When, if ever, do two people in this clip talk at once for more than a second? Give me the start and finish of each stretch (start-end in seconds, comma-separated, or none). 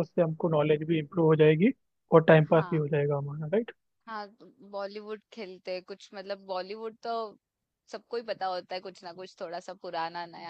none